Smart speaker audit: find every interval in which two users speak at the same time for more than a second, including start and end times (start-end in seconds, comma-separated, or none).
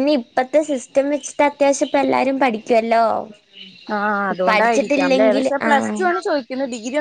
4.5-6.0